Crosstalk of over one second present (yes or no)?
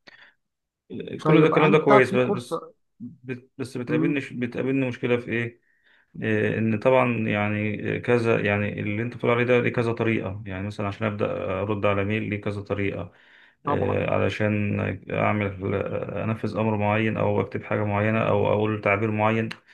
yes